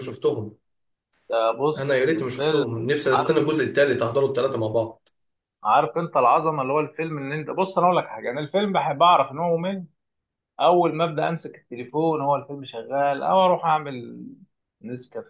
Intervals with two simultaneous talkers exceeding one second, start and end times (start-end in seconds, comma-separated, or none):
1.8-3.4